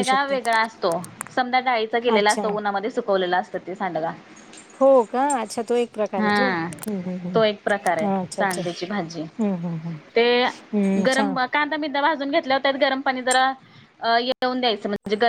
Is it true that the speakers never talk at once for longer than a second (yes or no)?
no